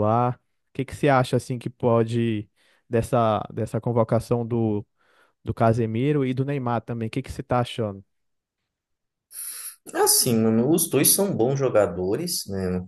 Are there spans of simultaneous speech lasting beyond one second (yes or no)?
no